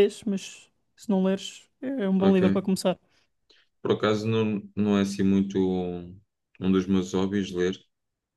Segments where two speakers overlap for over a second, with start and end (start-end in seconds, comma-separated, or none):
none